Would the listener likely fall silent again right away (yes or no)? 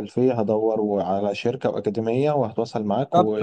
no